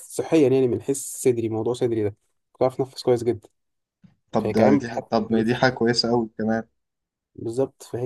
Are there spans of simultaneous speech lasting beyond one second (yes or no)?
yes